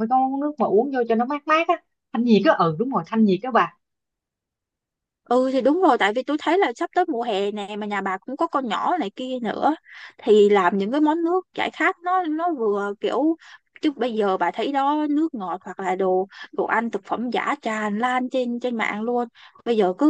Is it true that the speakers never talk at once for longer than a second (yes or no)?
yes